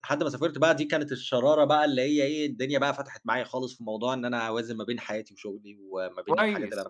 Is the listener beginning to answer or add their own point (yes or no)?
yes